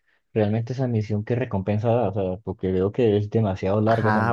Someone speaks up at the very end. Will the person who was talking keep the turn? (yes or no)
no